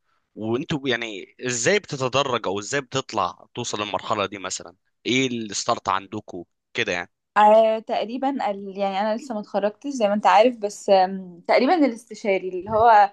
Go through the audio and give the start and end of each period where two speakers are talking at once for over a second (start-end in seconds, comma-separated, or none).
none